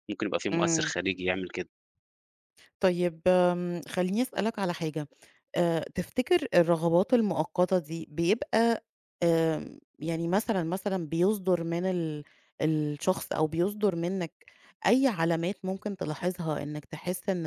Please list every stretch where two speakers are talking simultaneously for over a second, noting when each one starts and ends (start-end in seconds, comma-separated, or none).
none